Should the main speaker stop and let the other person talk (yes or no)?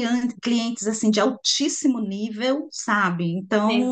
no